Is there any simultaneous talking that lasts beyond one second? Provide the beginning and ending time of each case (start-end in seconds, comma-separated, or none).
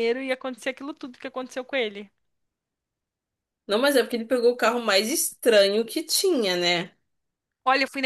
none